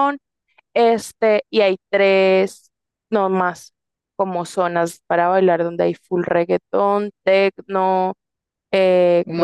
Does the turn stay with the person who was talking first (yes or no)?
yes